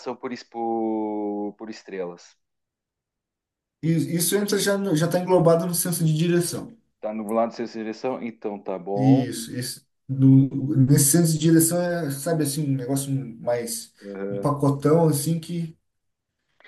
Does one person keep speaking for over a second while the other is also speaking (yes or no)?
no